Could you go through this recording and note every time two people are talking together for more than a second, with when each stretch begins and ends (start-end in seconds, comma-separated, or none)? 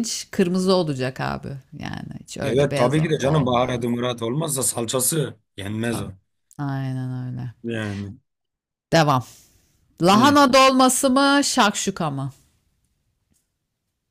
2.4-3.8